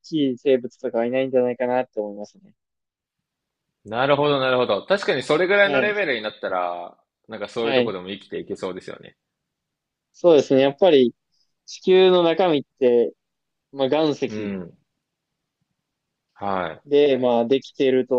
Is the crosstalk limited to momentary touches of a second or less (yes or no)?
yes